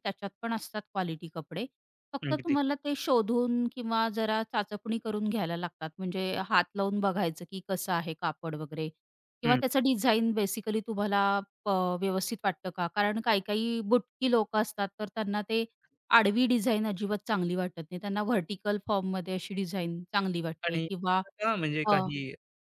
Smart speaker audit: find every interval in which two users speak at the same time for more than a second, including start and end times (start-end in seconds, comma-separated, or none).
none